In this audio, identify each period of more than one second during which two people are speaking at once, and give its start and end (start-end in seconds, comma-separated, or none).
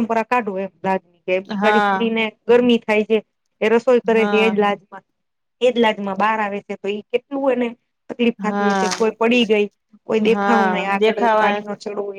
10.3-11.6